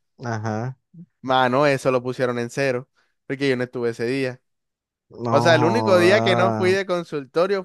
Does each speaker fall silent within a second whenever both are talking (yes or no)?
no